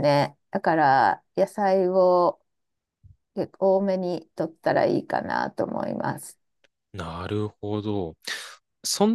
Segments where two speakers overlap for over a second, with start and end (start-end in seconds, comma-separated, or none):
none